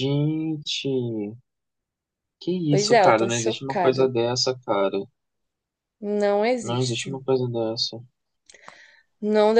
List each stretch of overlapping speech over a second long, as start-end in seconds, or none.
2.7-4.1